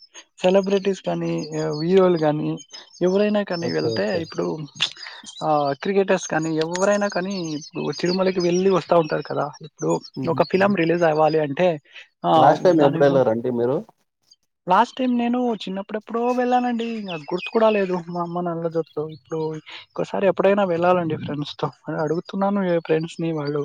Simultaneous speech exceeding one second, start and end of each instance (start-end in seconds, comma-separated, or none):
none